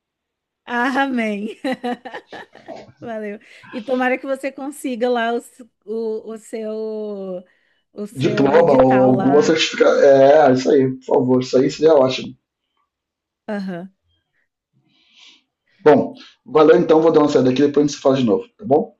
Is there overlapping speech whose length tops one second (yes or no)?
yes